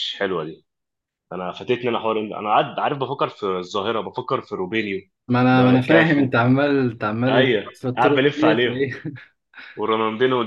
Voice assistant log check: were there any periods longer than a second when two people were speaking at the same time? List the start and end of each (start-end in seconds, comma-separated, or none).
7.3-8.9